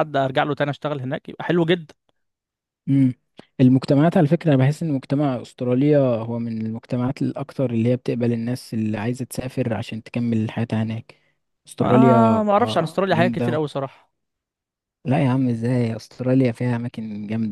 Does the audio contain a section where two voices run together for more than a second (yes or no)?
yes